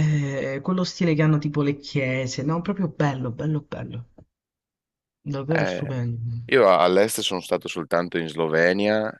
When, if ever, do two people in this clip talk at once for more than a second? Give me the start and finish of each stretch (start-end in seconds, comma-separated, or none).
none